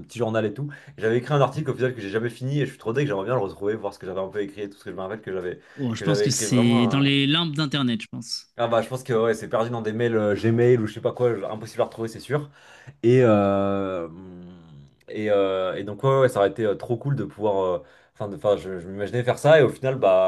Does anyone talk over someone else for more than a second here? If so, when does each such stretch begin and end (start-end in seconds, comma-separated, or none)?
5.9-7.2